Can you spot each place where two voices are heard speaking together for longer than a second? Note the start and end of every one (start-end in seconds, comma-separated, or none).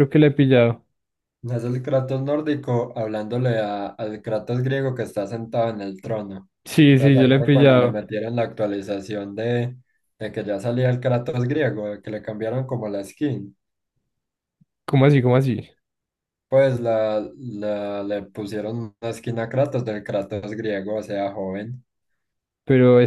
6.7-8.0